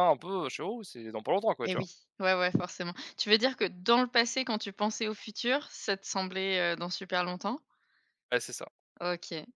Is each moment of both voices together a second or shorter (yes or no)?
yes